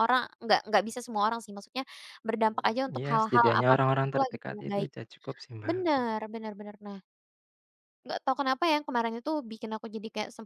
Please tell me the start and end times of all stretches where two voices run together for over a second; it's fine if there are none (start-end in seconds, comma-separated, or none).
2.5-4.9